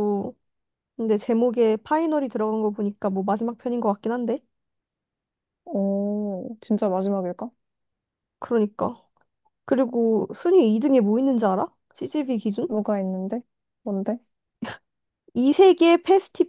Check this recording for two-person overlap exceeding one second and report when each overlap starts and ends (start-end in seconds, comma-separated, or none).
none